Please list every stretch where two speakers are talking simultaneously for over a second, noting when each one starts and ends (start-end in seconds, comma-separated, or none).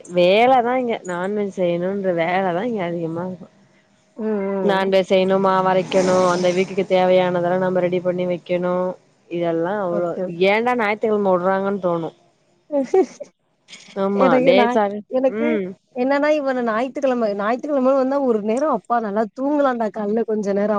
none